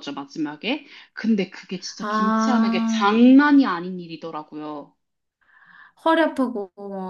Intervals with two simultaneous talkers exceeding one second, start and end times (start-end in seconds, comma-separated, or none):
2.0-3.2